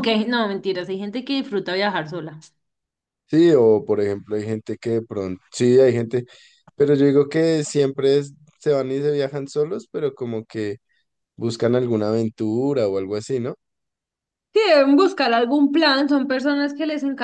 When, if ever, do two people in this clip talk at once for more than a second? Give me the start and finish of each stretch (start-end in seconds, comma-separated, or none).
none